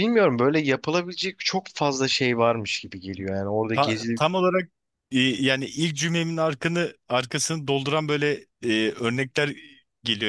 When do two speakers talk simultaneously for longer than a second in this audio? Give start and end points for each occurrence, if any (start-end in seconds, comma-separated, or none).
none